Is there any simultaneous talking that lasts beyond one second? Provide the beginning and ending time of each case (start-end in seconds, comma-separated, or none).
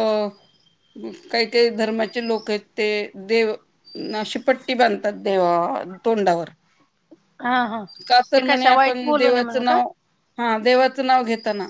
8.3-9.8